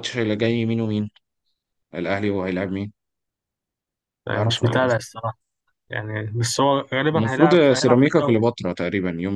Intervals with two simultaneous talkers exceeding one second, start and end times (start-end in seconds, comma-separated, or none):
7.2-8.4